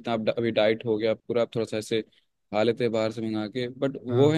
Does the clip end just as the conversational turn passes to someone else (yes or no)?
no